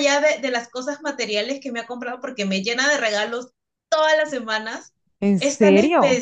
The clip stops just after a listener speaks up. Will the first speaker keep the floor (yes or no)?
yes